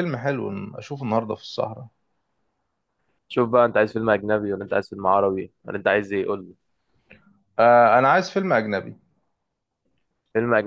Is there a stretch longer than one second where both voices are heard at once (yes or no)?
no